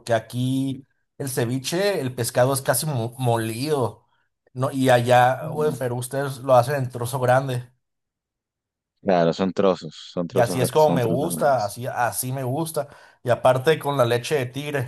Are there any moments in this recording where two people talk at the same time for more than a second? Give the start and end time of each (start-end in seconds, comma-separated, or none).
10.3-11.8